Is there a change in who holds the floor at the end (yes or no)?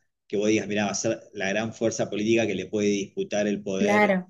yes